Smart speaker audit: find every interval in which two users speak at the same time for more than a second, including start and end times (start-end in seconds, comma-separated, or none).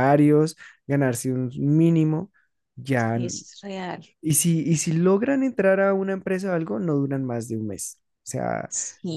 none